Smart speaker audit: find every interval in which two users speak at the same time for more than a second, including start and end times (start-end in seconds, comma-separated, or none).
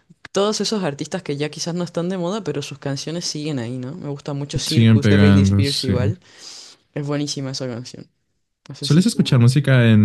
4.7-5.9